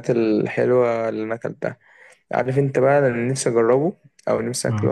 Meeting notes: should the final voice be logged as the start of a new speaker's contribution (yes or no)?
no